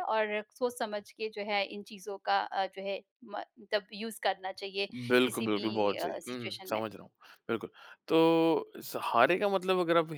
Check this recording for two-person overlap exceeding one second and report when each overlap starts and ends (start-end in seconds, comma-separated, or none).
4.9-6.8